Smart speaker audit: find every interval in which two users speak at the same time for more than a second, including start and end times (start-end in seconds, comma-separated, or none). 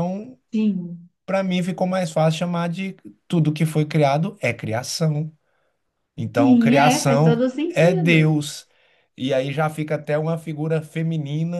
6.3-8.5